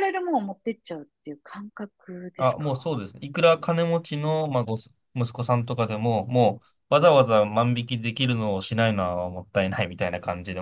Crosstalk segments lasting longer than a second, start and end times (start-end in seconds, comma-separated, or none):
none